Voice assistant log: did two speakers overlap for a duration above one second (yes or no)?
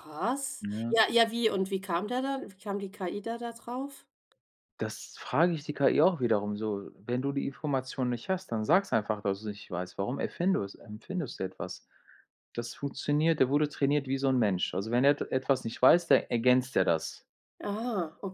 no